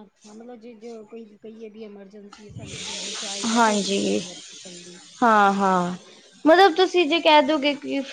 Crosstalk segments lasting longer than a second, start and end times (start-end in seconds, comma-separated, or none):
none